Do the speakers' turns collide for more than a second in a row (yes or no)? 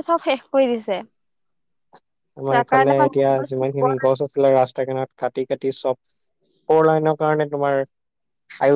yes